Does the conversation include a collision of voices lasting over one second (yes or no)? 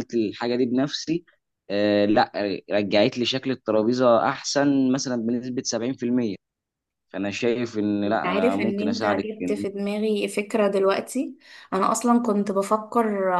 yes